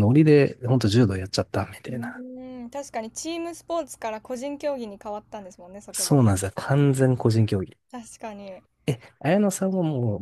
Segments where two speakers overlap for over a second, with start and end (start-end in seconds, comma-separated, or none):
none